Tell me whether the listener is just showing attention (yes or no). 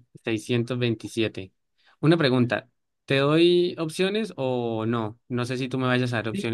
no